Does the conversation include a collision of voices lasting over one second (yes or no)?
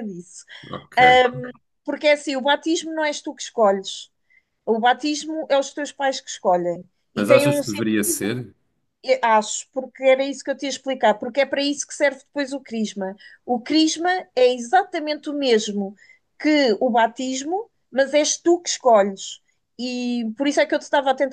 yes